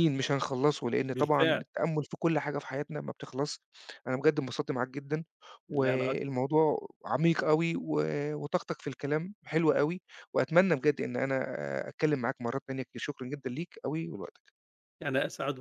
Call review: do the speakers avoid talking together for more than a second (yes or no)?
yes